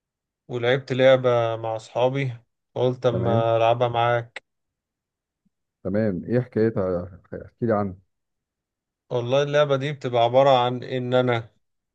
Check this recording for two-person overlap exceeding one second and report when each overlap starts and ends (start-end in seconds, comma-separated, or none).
none